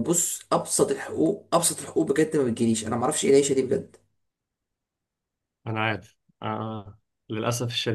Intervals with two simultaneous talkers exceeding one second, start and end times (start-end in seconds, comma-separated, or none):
none